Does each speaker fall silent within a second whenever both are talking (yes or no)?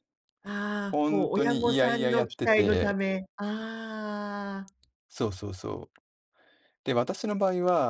no